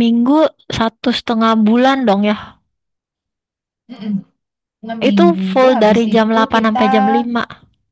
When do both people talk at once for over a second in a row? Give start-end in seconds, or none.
5.1-6.8